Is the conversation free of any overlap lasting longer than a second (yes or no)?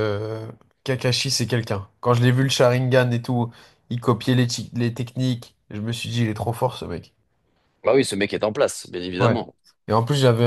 yes